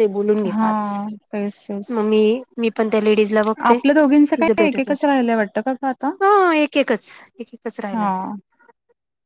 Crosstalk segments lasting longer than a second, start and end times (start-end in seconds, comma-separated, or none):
3.7-6.1